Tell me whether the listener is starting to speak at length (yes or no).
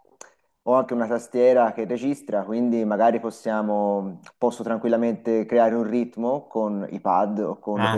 no